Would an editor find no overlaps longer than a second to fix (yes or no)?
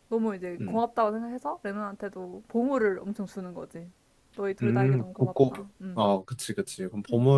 no